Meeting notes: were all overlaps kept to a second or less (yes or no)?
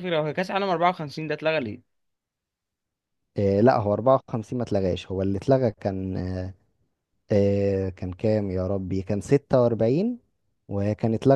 yes